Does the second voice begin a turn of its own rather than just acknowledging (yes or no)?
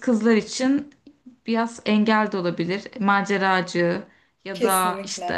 no